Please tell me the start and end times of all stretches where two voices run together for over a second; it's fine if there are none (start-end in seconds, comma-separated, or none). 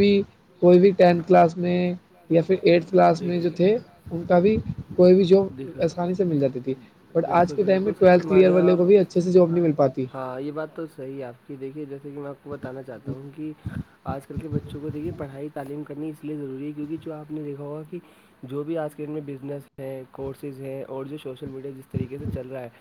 7.2-8.9